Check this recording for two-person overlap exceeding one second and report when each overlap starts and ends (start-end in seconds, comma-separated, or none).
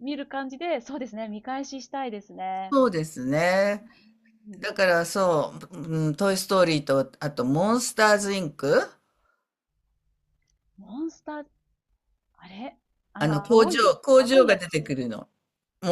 13.2-14.8